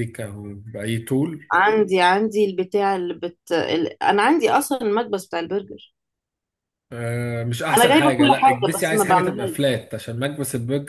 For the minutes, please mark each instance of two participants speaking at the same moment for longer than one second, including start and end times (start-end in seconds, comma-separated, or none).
7.8-9.6